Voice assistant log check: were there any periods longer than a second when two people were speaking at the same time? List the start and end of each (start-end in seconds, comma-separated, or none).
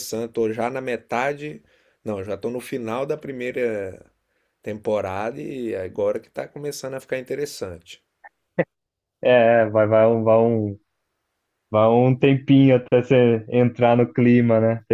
none